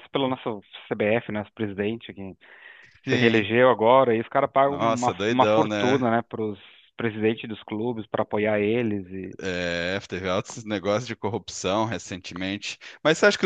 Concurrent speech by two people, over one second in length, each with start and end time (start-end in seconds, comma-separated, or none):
4.7-6.1